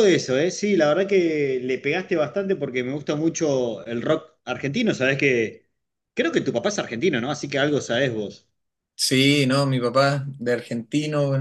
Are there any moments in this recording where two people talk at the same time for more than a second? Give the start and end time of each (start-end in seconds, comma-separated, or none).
none